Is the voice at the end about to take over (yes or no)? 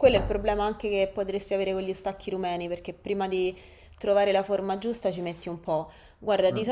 no